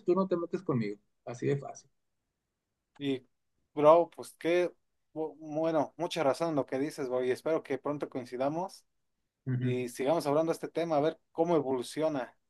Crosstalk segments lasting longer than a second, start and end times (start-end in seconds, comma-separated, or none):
none